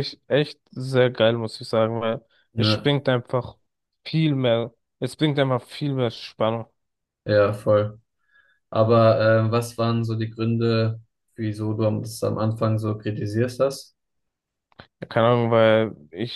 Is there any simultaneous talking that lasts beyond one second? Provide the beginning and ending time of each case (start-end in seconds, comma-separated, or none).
none